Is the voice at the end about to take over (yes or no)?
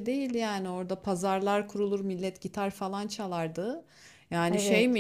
no